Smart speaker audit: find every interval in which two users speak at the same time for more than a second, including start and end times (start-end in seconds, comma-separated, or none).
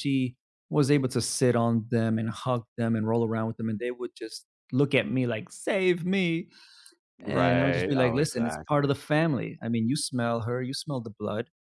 7.2-8.9